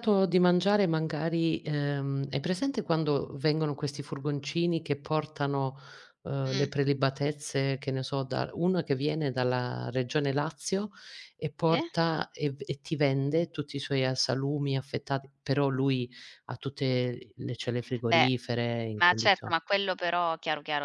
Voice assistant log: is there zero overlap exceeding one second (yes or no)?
yes